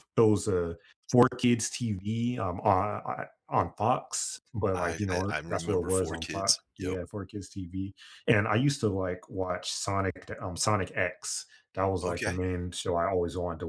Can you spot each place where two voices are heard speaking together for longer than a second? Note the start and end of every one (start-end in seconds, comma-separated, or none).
4.7-7.0